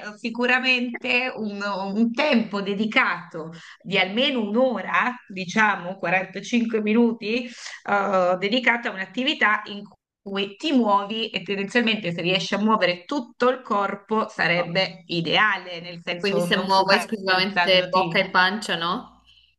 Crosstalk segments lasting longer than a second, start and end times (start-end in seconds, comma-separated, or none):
16.2-18.2